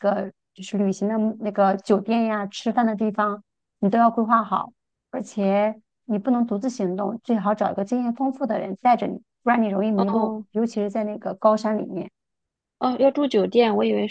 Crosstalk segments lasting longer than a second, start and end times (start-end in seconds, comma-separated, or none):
none